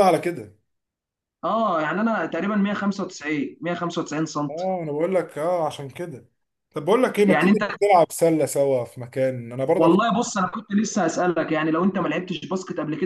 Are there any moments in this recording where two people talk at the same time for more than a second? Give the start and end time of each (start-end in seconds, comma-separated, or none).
none